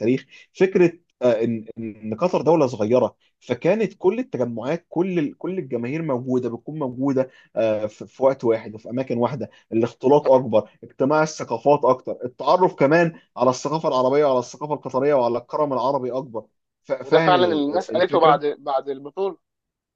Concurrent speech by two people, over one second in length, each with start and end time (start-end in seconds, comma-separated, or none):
17.0-18.6